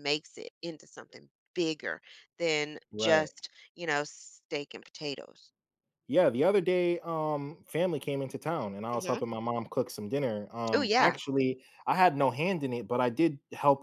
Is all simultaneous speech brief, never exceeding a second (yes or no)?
yes